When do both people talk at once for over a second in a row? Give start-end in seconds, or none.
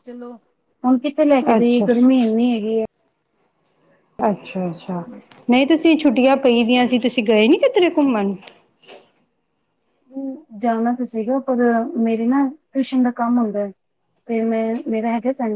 none